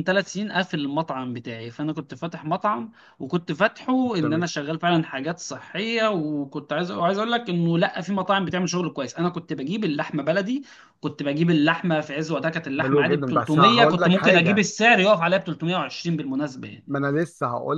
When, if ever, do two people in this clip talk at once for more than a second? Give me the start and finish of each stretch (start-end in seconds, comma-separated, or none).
12.8-14.6